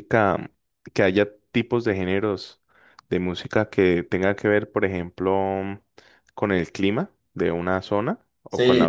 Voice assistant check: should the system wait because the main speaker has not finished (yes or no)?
no